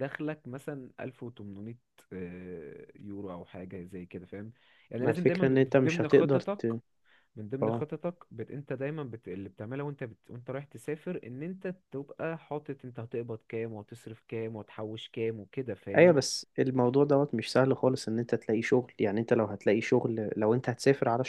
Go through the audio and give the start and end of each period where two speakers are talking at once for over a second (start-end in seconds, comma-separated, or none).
5.0-6.6